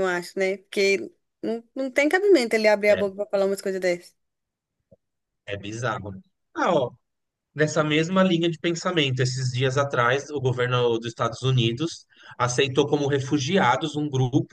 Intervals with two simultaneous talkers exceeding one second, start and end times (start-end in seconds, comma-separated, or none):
none